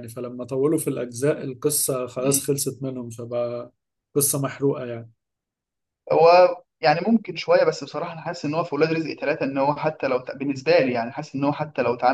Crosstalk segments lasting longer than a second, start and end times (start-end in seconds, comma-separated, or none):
none